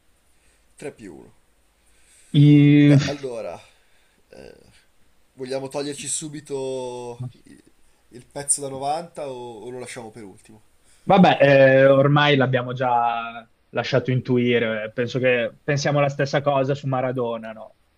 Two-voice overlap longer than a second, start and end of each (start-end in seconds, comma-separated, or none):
none